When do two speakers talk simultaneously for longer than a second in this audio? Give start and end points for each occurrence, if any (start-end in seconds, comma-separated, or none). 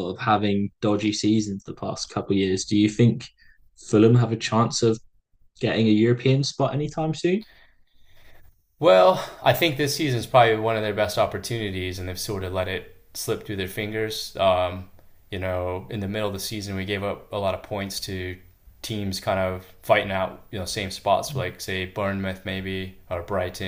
none